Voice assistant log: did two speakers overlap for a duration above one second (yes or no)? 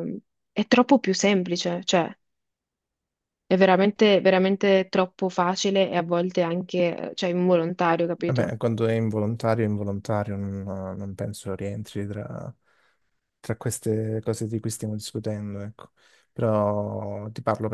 no